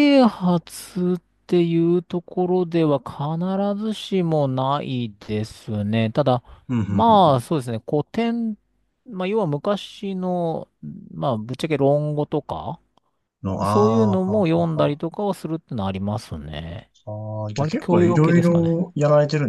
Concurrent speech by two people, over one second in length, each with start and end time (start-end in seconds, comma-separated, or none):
13.7-15.0, 17.5-18.8